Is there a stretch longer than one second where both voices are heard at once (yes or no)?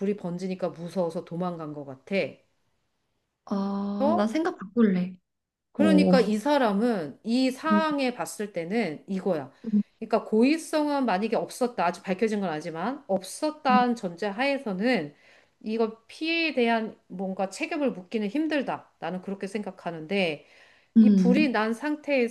no